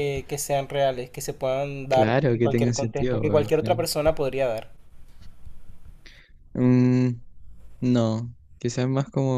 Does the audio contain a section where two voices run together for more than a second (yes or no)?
yes